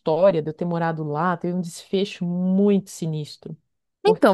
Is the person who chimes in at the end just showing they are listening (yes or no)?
no